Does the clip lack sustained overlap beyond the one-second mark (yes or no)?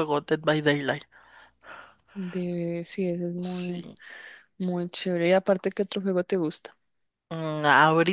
yes